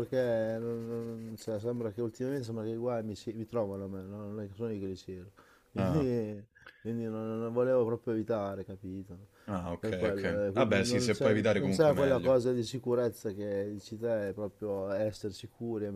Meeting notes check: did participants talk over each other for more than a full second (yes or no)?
yes